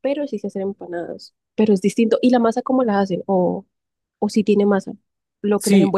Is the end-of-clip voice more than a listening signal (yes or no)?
yes